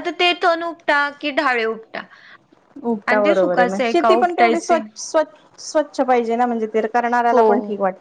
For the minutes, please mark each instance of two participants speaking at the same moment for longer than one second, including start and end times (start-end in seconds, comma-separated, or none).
3.1-4.8